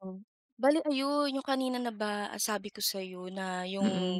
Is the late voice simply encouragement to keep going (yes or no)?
yes